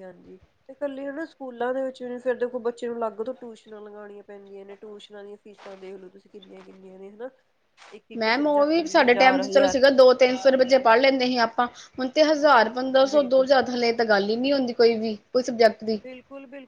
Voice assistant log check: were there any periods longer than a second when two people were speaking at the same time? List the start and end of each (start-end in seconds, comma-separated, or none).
8.2-9.8